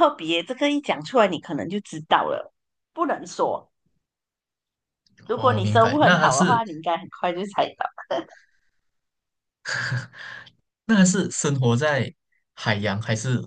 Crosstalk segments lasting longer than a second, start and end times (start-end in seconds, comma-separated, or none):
5.3-6.6